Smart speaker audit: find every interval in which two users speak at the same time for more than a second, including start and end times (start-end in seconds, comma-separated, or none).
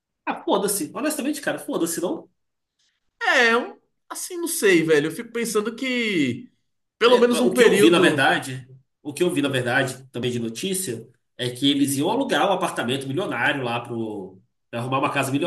7.0-8.3